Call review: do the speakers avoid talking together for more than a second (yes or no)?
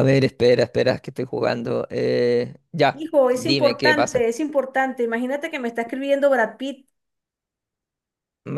no